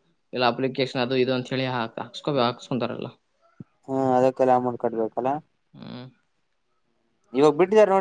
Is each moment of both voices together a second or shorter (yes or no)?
yes